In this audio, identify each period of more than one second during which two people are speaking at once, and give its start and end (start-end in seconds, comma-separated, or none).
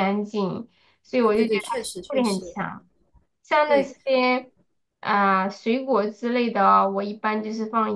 1.2-2.5